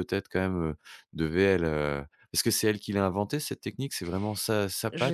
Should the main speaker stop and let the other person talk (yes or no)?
yes